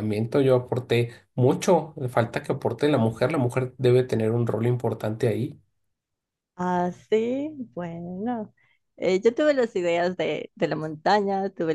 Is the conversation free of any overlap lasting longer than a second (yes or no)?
yes